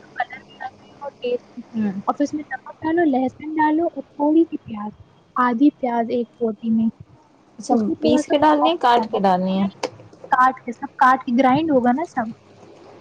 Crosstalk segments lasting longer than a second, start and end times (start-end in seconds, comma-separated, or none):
7.7-9.7